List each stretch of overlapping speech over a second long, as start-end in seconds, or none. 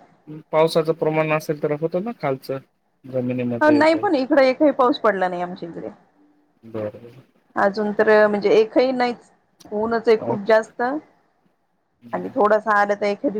none